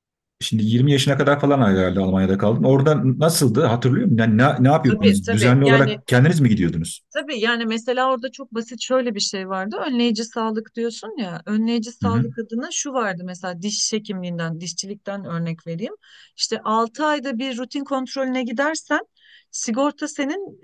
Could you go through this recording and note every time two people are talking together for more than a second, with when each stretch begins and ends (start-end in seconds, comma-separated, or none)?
4.8-6.0